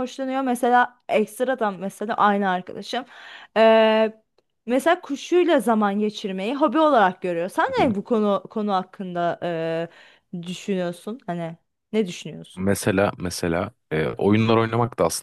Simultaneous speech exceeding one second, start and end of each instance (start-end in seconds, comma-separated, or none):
none